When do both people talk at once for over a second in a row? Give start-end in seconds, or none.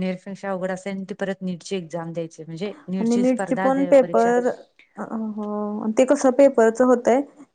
3.0-4.3